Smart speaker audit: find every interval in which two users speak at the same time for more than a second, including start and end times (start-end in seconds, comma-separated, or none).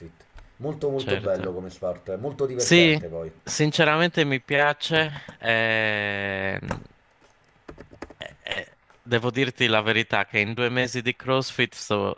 none